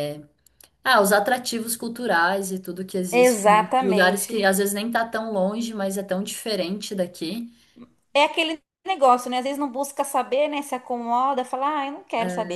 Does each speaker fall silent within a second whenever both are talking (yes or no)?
no